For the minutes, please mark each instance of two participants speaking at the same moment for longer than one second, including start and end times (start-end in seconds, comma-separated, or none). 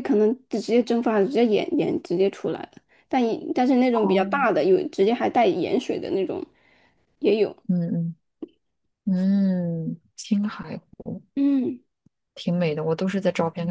none